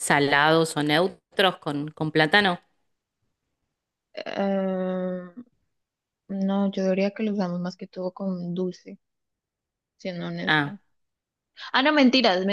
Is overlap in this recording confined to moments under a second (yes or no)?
yes